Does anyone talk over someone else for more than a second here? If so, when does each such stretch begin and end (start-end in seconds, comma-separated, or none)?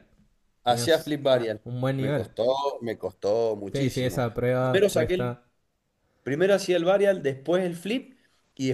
3.7-5.4